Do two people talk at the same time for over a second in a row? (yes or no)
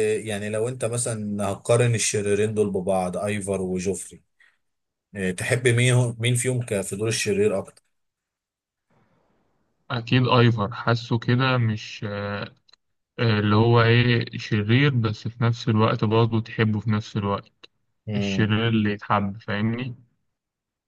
no